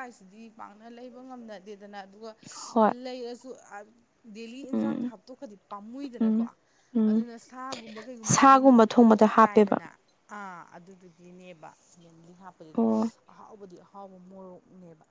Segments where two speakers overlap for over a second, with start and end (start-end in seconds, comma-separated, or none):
8.3-9.8